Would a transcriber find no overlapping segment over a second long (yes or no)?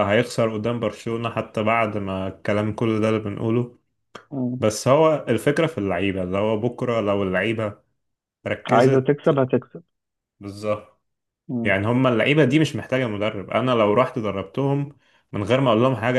yes